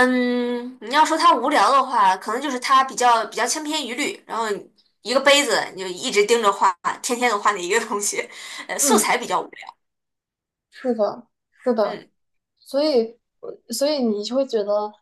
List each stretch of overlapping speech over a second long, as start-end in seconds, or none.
none